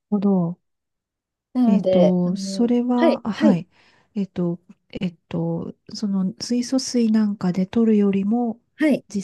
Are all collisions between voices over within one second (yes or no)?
no